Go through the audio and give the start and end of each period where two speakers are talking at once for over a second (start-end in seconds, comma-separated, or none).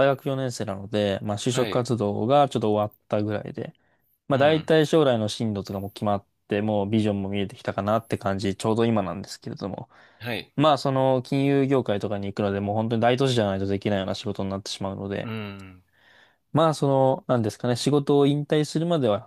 none